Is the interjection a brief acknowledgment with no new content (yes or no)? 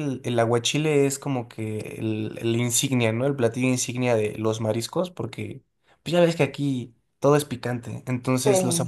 yes